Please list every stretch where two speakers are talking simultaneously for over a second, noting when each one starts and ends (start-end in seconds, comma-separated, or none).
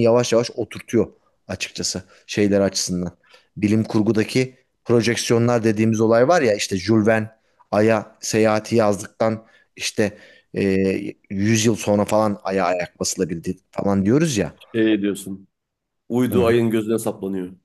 none